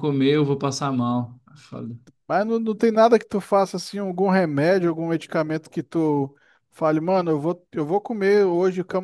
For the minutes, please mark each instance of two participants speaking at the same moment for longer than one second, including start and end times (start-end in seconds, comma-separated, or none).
none